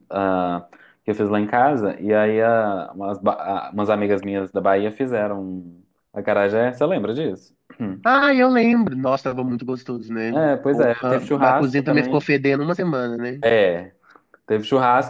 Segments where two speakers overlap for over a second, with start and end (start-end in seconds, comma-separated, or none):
10.3-12.3